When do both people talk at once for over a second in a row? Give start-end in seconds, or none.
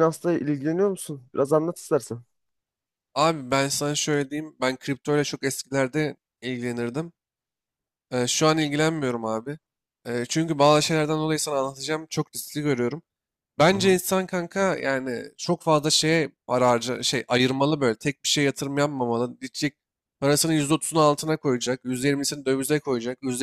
none